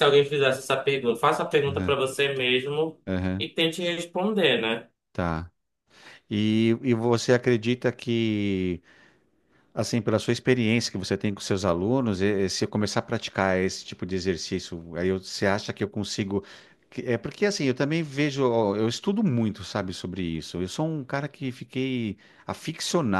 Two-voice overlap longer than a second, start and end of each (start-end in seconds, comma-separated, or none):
none